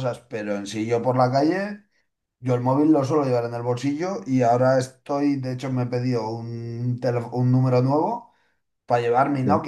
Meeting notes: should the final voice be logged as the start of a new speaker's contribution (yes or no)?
no